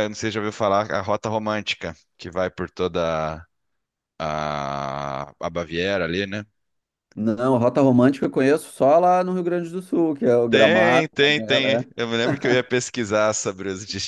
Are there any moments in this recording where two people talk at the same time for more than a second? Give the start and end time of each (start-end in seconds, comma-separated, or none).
10.5-12.1